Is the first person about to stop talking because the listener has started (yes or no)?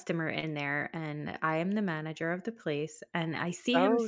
yes